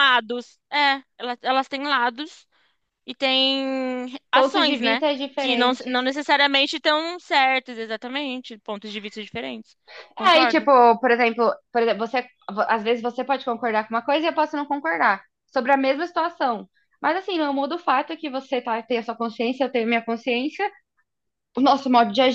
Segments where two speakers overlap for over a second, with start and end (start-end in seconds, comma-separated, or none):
4.3-6.0